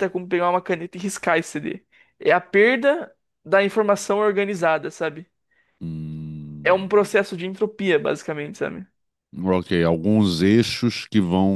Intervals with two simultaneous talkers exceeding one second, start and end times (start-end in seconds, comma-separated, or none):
none